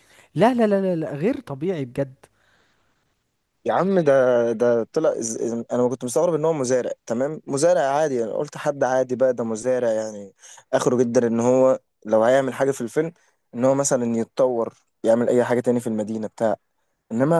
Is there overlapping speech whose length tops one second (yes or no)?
no